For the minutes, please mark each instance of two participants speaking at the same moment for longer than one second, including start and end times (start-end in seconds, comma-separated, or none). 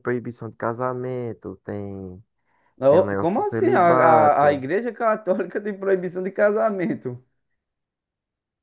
2.9-4.7